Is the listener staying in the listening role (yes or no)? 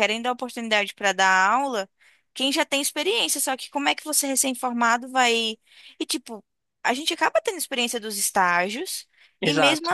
yes